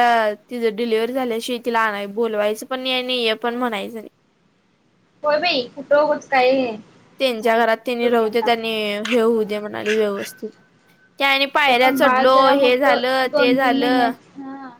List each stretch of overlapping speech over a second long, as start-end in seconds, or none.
11.8-14.1